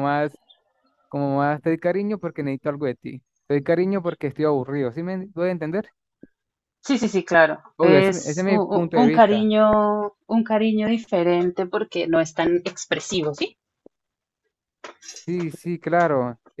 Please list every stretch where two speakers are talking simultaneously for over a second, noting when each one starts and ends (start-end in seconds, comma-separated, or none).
7.8-9.5